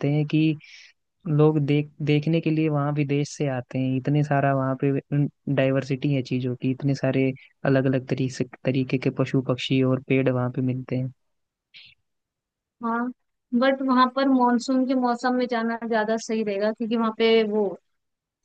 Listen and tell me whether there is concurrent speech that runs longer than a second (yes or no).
no